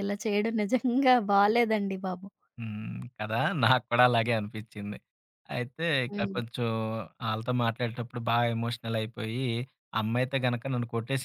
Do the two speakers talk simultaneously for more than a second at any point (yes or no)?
no